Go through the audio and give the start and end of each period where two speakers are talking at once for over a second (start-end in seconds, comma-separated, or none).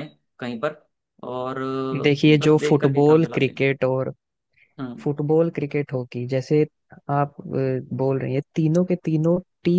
2.0-3.7